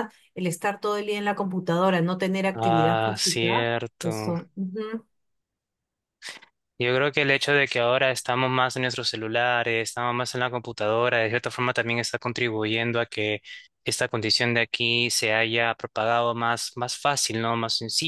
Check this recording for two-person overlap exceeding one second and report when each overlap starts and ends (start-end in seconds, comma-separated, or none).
2.5-4.3